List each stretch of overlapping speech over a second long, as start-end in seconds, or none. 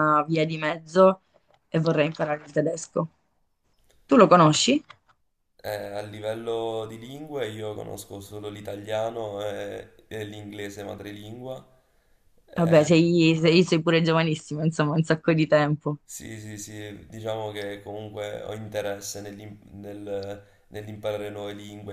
none